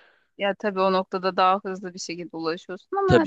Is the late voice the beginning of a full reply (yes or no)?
yes